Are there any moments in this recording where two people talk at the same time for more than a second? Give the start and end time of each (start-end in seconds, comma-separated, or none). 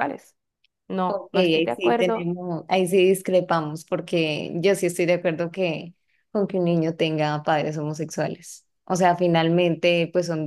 1.1-2.3